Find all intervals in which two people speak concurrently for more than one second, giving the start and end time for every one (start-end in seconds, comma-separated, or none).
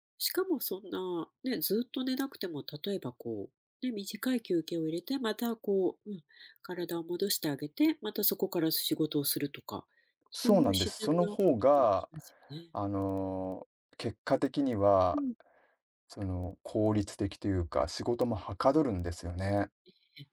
10.3-12.1